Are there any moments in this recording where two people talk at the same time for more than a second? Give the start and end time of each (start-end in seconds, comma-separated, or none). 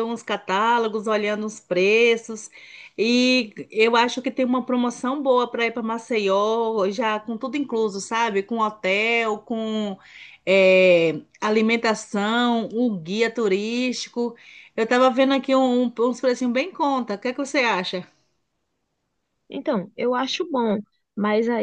none